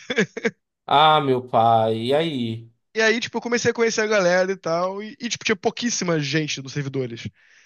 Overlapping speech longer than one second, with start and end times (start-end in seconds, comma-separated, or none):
none